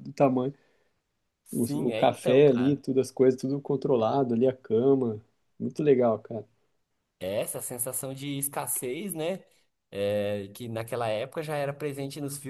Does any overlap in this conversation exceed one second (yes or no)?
yes